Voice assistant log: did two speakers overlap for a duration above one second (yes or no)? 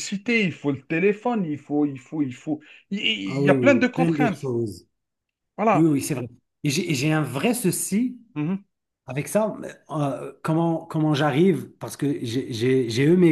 yes